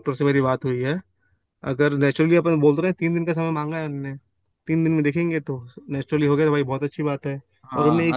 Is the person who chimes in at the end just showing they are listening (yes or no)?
no